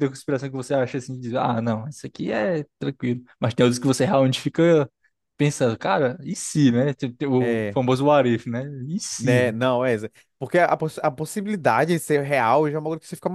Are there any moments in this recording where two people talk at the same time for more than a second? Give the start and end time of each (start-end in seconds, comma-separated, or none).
none